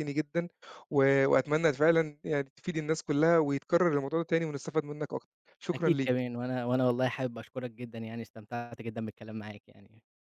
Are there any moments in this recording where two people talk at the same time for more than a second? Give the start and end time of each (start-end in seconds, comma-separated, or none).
none